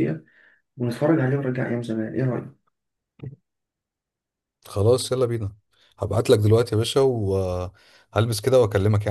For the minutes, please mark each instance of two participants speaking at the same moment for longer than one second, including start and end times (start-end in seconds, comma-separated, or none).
none